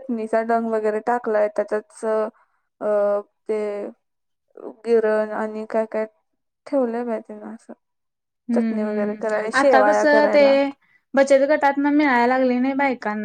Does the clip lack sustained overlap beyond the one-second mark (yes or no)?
no